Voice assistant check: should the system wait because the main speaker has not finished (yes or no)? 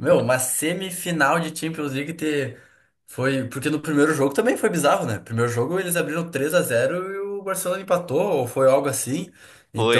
yes